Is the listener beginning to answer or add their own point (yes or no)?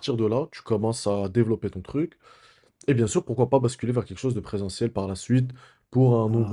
no